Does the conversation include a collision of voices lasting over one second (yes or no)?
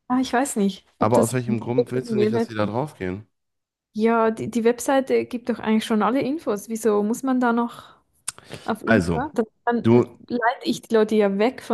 yes